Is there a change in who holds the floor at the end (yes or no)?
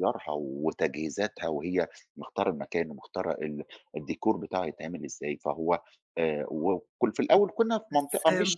no